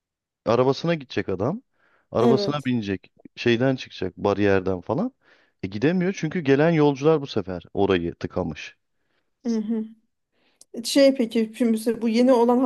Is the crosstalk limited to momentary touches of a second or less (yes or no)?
yes